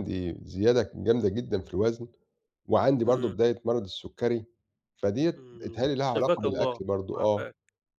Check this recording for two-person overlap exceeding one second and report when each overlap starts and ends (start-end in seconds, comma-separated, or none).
5.4-7.5